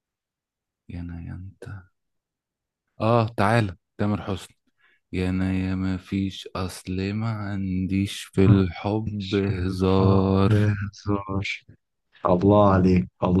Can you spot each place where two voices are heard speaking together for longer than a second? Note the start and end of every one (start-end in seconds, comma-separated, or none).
9.1-10.6